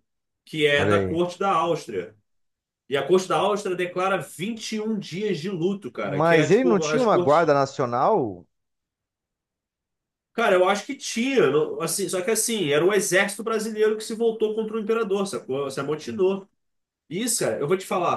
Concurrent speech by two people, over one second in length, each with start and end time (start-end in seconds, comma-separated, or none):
6.0-7.5